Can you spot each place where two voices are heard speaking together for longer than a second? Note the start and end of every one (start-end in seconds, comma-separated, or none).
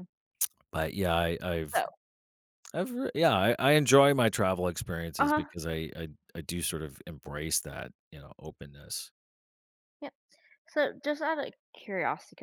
none